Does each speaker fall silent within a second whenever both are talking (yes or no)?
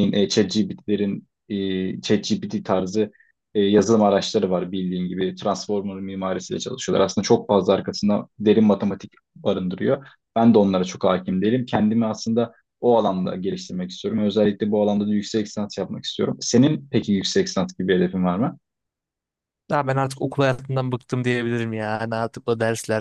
yes